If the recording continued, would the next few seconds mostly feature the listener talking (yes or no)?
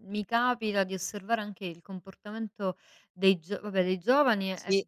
no